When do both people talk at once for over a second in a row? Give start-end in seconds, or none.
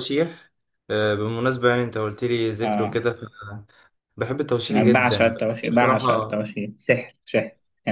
4.7-6.4